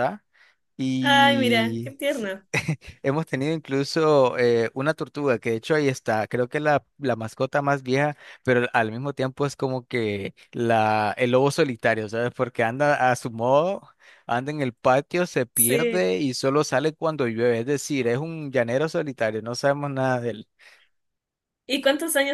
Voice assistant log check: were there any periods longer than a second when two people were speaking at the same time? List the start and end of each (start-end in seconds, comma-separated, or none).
1.0-2.3